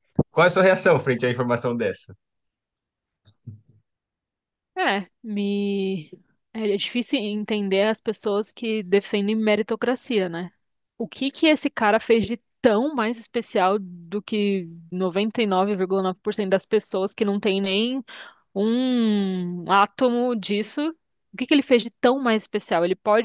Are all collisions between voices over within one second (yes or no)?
yes